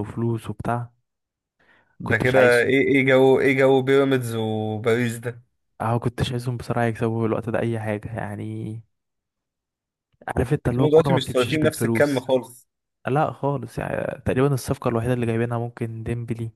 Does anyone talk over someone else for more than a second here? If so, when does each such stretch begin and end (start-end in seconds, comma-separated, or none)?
10.8-12.3